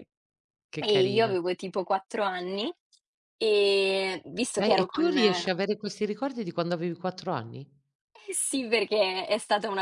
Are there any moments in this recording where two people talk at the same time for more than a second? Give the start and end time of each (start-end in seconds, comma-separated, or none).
none